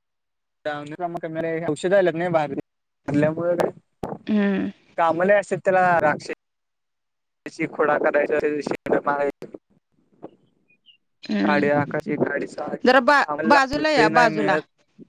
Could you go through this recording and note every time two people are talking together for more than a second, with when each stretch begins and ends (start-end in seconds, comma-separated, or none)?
12.9-14.6